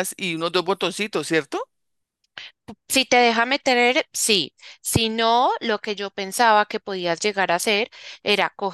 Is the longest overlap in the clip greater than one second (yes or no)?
no